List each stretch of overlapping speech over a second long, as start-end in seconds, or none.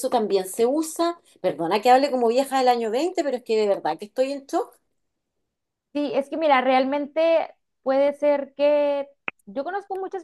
none